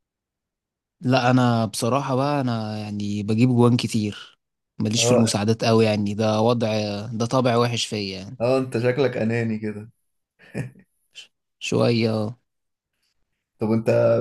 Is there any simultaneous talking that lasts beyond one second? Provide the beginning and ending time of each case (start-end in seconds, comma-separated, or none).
none